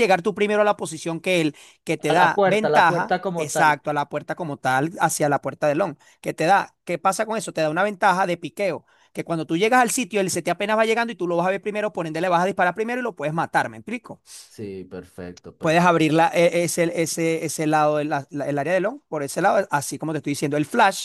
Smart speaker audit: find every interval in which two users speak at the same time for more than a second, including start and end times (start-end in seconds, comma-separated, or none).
2.1-3.8